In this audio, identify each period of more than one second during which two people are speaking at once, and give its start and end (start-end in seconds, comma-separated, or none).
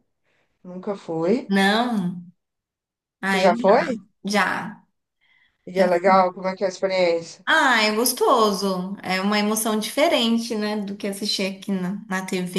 none